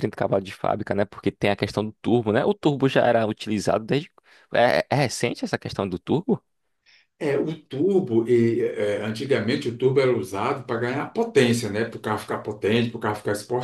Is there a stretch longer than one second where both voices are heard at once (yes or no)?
no